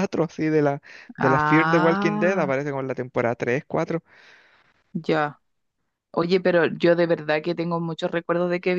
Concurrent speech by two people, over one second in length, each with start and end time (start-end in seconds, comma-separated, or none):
1.2-2.5